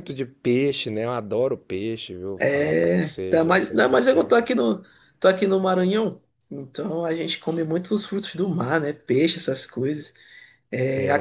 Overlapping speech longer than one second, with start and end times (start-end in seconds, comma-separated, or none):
2.4-4.3